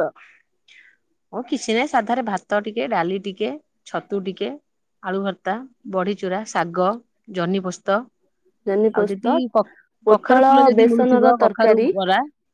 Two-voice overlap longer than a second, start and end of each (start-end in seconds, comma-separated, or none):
10.1-11.9